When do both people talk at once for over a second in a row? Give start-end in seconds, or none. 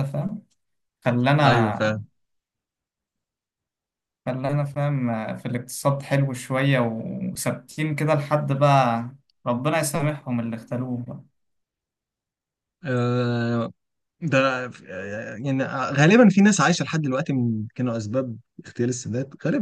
none